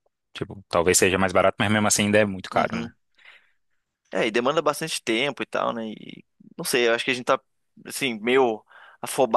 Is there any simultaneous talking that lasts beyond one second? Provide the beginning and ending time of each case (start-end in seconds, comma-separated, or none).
none